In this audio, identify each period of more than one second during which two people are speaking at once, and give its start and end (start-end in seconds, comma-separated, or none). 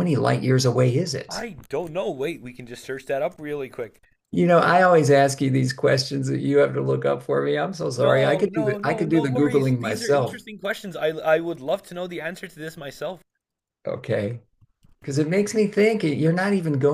8.0-10.4